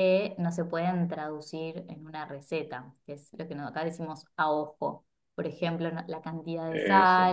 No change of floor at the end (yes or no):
yes